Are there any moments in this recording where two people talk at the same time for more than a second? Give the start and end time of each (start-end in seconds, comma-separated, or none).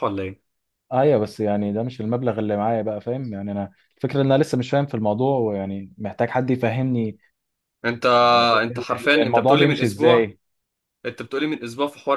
8.6-10.3